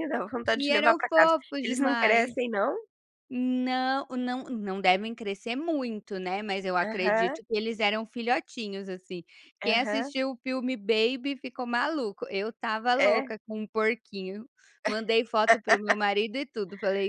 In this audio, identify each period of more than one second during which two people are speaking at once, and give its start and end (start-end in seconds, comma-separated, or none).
0.5-2.4